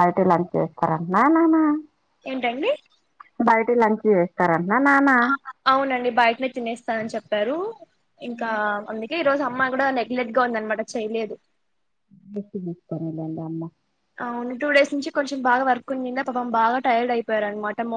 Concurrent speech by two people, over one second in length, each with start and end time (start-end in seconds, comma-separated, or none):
none